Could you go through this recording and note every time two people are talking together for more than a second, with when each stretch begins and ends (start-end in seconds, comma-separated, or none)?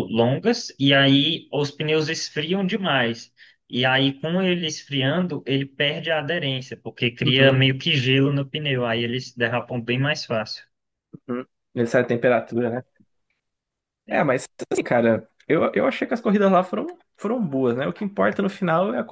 none